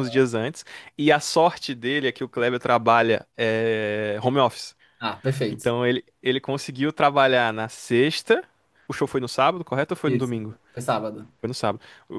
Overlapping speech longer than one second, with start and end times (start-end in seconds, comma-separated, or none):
none